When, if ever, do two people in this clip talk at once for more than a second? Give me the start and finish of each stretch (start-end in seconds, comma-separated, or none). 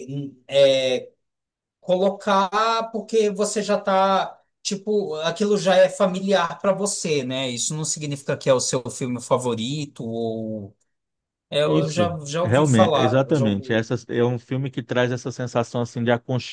11.6-13.8